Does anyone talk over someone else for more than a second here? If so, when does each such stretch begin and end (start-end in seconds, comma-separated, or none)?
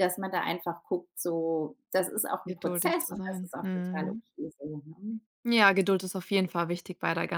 2.5-4.2